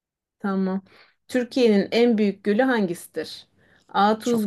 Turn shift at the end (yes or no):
no